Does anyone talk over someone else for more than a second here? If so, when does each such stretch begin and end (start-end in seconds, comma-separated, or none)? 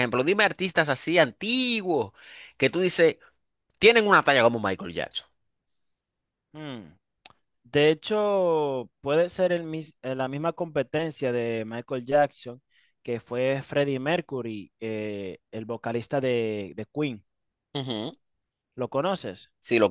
none